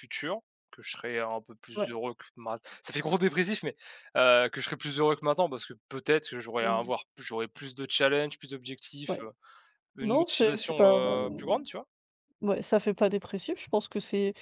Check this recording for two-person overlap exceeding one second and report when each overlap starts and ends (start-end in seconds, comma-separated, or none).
10.0-11.6